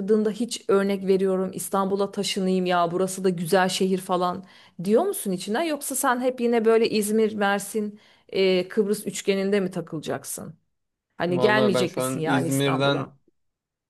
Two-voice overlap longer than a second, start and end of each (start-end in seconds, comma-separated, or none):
11.3-13.1